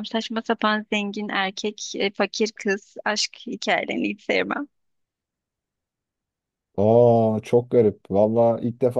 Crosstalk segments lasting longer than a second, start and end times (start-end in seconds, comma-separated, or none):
none